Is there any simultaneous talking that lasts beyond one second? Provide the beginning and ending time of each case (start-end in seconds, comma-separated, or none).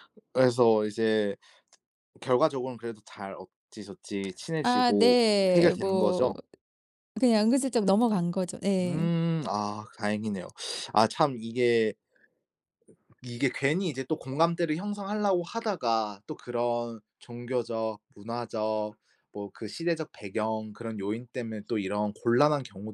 4.6-6.3